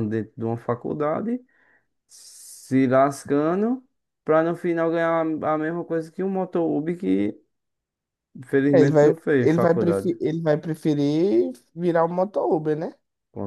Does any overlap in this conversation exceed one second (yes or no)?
yes